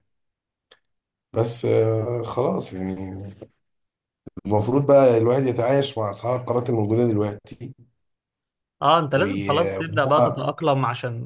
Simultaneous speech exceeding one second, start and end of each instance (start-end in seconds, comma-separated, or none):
9.2-10.5